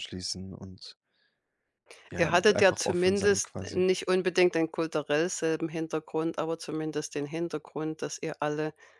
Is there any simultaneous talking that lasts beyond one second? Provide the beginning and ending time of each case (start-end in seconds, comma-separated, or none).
2.2-3.8